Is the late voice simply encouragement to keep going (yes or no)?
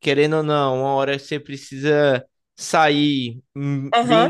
yes